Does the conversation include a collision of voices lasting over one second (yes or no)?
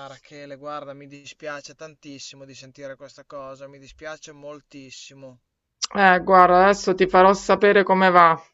no